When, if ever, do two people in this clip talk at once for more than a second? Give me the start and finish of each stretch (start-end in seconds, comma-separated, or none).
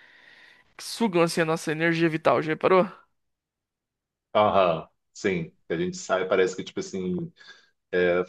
none